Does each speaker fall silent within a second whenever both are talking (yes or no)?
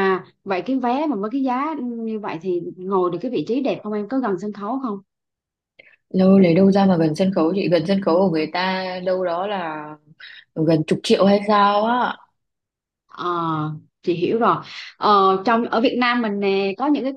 yes